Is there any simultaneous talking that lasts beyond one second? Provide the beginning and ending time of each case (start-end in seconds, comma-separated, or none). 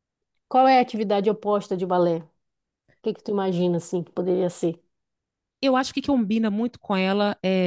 none